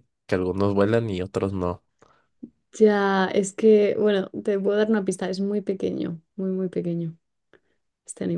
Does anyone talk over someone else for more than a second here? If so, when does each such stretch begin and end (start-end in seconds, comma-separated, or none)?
none